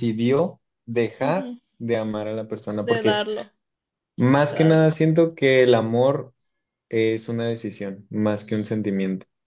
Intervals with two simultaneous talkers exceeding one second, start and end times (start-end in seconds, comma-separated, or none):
none